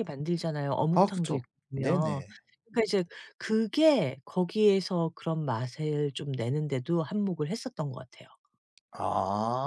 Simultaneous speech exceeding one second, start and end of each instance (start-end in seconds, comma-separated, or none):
0.9-2.2